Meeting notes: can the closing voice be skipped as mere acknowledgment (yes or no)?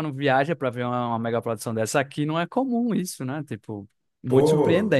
no